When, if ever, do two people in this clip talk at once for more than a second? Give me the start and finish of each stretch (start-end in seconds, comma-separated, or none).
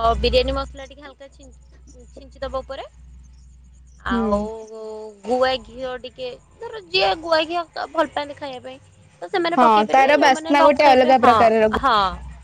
9.6-11.3